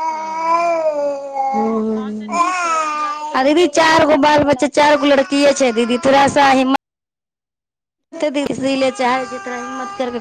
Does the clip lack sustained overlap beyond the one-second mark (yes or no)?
no